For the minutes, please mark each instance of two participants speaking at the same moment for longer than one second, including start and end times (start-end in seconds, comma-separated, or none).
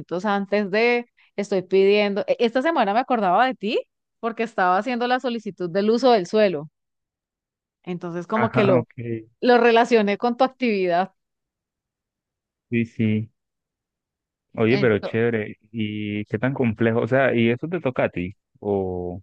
none